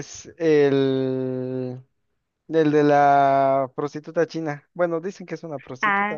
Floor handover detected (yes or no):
yes